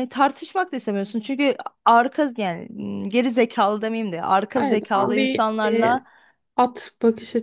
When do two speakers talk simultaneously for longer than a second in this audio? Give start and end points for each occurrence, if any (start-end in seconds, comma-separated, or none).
4.6-6.0